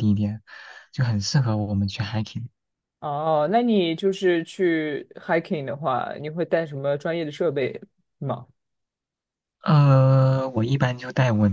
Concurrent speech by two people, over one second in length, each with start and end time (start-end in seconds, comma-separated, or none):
none